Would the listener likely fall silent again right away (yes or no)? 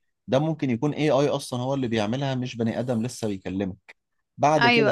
yes